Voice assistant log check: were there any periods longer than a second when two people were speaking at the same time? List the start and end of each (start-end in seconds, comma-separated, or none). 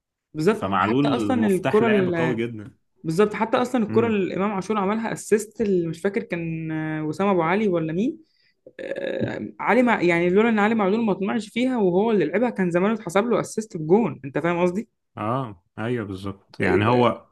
0.5-2.4